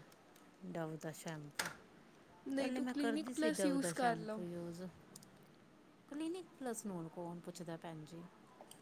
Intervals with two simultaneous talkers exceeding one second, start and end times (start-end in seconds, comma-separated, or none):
2.5-4.4